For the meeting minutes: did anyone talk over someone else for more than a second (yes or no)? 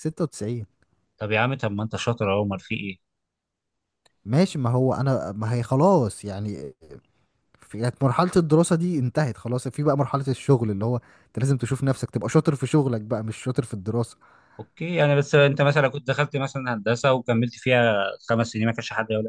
no